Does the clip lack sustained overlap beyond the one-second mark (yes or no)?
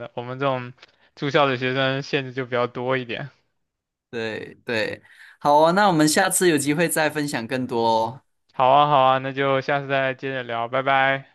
yes